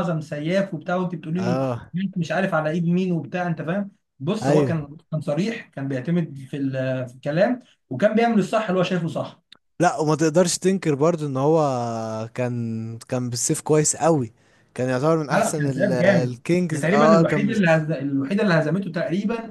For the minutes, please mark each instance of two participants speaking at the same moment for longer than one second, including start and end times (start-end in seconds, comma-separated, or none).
15.3-17.5